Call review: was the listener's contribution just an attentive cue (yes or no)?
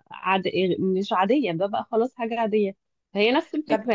yes